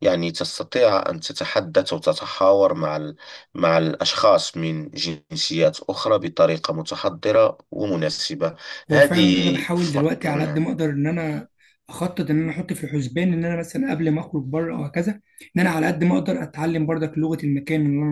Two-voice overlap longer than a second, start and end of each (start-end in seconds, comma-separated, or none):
8.9-10.6